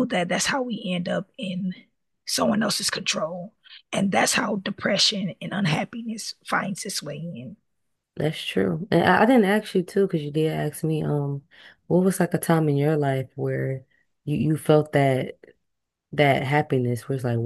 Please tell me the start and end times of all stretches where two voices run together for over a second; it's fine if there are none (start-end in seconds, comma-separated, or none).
none